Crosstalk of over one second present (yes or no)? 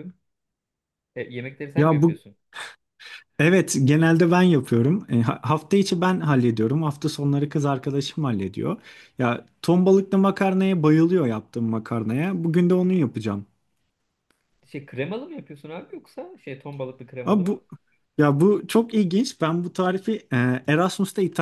no